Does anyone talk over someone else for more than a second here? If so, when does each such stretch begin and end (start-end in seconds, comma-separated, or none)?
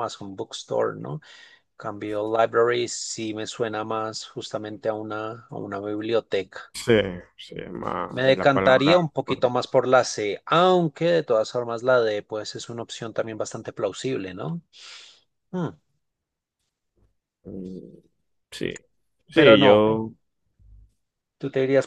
8.1-9.6